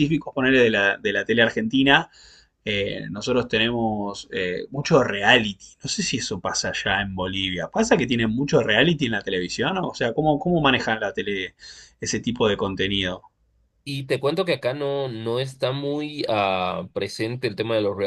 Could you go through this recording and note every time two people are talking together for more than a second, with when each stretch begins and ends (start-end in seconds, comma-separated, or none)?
none